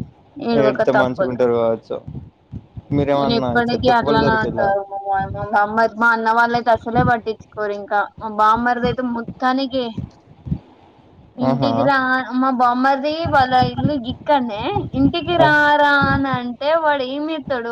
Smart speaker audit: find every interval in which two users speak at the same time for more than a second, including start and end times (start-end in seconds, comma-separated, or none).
3.1-4.7